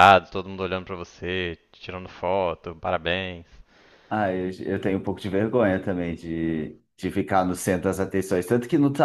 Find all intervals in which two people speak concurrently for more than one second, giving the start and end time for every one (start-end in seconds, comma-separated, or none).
none